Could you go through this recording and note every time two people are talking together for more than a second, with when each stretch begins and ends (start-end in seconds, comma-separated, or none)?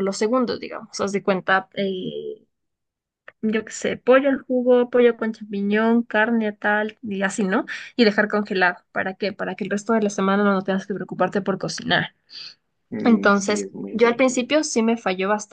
13.0-14.4